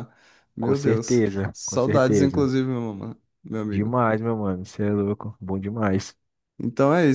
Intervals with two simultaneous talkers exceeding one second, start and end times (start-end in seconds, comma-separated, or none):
0.6-2.5